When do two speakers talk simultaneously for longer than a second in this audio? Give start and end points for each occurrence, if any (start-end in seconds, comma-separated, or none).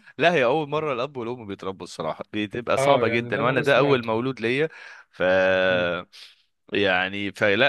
2.8-4.1